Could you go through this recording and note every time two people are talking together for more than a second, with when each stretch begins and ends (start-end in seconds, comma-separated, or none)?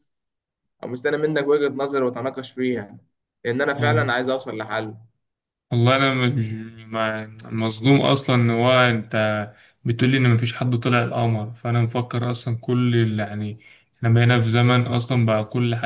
none